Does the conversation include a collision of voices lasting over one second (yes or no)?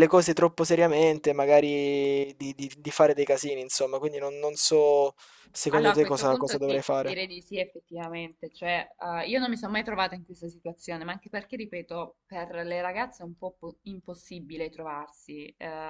yes